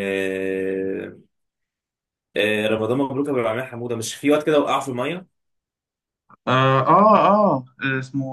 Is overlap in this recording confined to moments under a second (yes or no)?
yes